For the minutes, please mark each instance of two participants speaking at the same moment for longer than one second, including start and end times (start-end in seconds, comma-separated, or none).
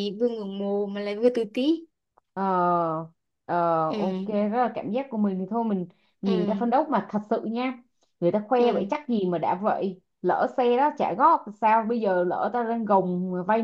none